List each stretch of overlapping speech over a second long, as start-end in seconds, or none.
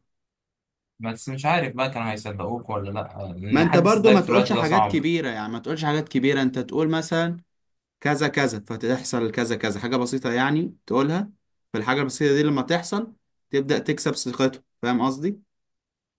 3.5-5.0